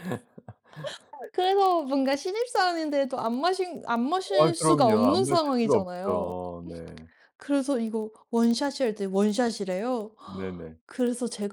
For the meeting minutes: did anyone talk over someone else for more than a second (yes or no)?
yes